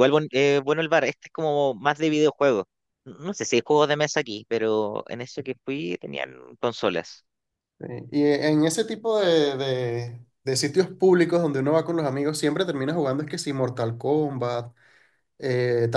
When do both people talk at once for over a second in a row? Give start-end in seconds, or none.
none